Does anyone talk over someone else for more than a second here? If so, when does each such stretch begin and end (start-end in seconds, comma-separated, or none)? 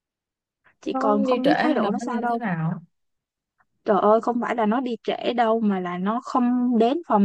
0.8-2.4